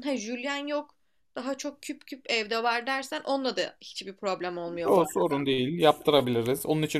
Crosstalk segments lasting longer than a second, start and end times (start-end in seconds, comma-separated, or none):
none